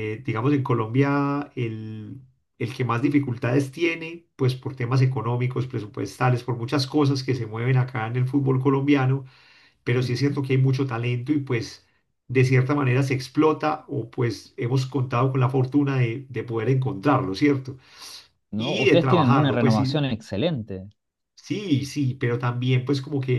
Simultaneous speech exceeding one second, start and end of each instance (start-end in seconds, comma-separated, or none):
18.6-20.0